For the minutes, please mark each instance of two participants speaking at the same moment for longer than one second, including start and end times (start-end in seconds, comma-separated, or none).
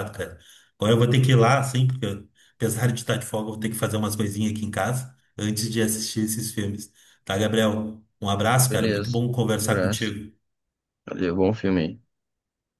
8.7-10.1